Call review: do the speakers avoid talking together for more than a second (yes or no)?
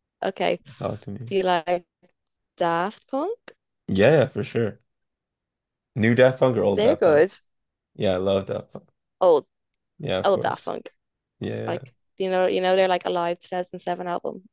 yes